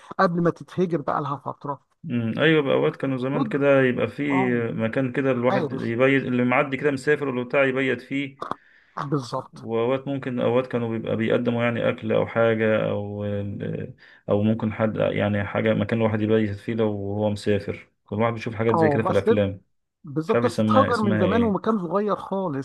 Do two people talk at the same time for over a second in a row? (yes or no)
yes